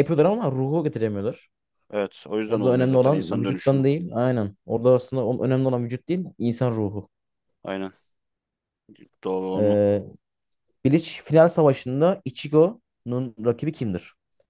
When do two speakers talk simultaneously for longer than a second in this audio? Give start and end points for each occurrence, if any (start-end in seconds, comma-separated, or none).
2.5-3.9